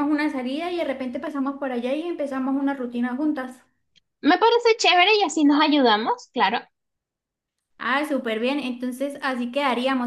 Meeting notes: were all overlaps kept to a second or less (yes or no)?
yes